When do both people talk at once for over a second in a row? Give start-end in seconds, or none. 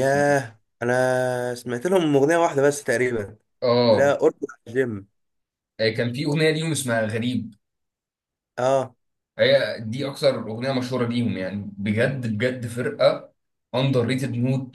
none